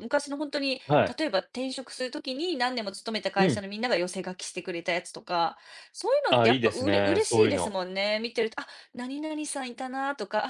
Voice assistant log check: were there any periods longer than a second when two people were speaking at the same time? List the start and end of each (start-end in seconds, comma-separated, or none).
6.3-7.8